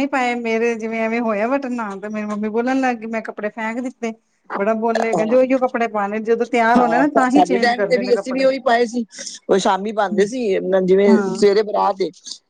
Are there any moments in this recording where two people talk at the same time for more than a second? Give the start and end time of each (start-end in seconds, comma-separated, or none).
6.8-8.4